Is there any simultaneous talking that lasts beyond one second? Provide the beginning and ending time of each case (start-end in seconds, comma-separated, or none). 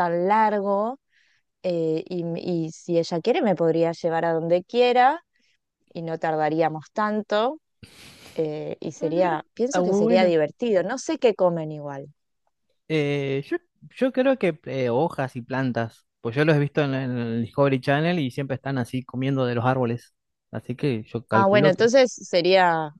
8.9-10.3